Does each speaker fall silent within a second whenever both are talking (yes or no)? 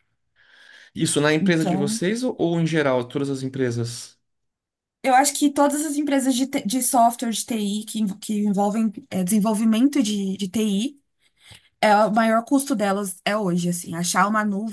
yes